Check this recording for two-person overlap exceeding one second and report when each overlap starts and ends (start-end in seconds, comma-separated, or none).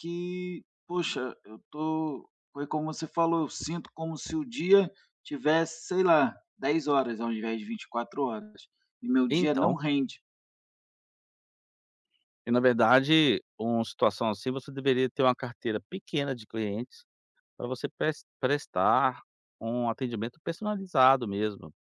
none